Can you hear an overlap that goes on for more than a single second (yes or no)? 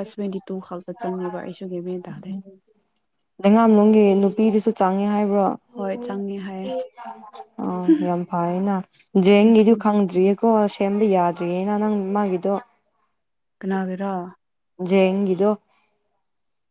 no